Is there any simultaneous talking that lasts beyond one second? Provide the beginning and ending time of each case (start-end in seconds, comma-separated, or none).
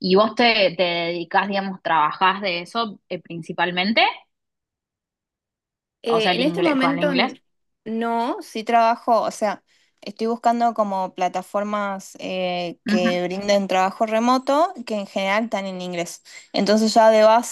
6.1-7.4